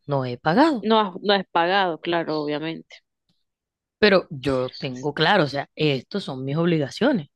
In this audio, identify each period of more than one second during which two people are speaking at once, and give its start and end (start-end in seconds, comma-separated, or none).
none